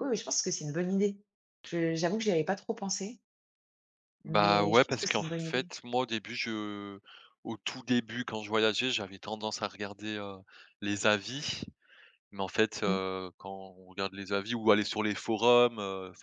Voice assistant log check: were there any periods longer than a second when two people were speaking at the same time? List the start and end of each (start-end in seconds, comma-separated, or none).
4.2-5.7